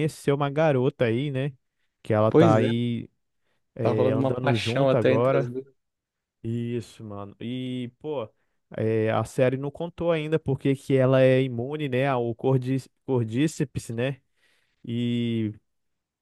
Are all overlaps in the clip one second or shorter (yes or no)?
no